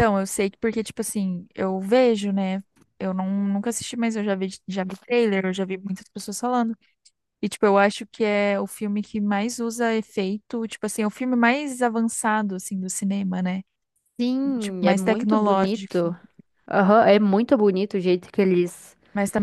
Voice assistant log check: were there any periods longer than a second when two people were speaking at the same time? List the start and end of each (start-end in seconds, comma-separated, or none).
14.6-16.1